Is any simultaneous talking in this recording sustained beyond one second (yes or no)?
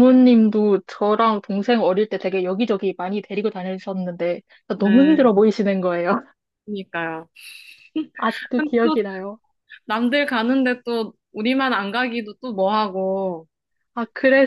no